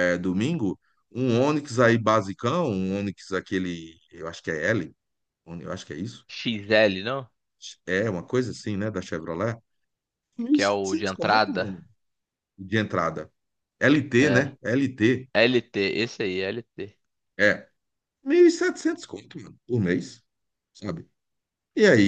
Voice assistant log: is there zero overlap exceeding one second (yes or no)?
no